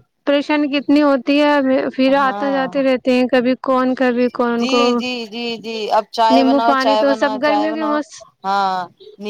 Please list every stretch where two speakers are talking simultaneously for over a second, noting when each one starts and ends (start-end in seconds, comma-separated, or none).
6.3-8.0